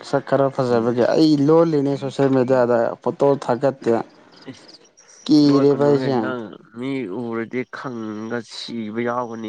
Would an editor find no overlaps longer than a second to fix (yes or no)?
yes